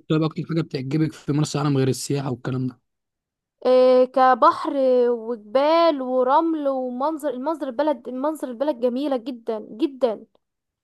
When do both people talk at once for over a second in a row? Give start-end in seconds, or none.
none